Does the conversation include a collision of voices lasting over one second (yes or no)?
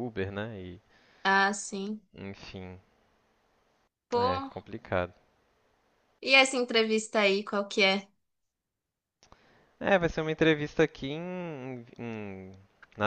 no